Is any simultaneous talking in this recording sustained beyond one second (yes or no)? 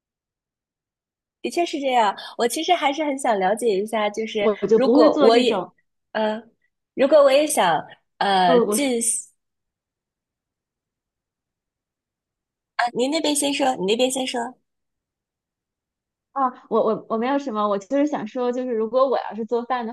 yes